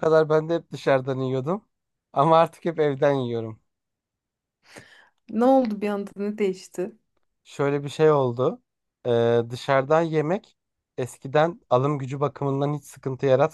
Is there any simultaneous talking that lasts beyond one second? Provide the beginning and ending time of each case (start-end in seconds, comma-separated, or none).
none